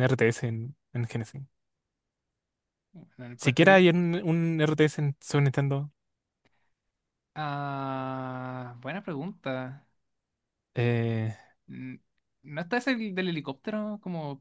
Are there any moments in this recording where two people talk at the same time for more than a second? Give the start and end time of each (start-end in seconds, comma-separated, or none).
none